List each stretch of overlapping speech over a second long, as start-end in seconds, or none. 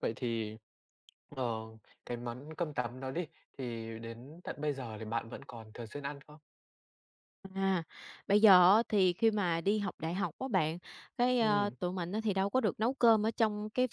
none